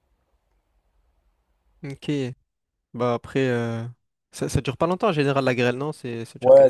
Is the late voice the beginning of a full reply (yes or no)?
yes